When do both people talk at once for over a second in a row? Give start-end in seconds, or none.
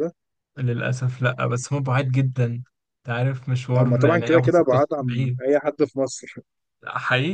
3.8-5.4